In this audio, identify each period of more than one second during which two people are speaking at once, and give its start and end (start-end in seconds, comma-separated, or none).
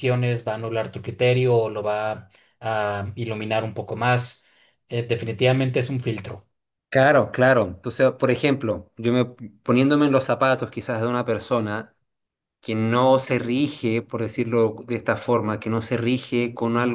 none